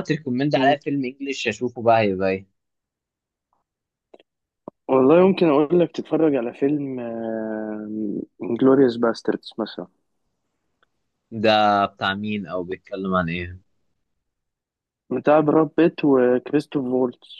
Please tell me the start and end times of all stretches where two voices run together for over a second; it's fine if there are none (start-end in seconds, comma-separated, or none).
none